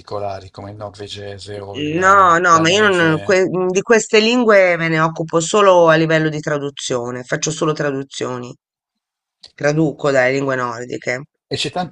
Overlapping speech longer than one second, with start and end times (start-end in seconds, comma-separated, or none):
2.0-3.4